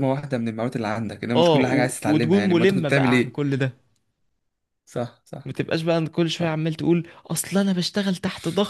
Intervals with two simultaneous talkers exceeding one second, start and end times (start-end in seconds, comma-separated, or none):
1.4-3.4